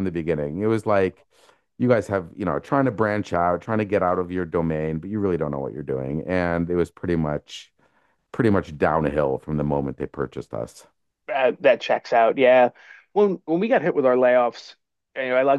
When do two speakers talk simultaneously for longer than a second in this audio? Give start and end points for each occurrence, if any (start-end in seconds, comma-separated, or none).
none